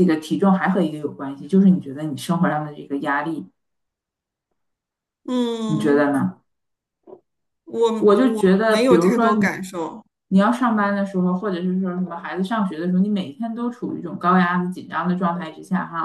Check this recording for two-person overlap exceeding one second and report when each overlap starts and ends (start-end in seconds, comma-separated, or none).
8.0-9.6